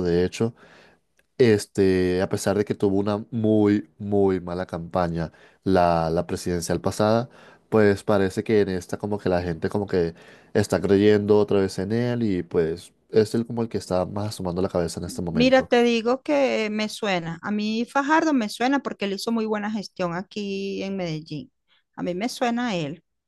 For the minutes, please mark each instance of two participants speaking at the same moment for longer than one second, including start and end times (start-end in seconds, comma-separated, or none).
none